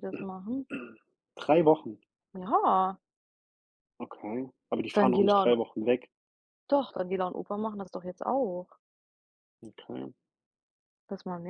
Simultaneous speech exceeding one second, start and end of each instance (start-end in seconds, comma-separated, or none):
none